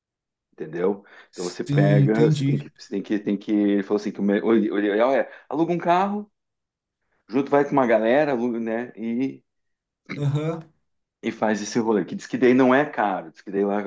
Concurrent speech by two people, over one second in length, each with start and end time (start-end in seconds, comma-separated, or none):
1.3-2.7